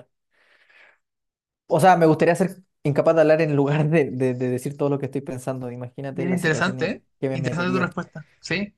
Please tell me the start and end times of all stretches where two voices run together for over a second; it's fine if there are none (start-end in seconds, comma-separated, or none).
6.1-7.9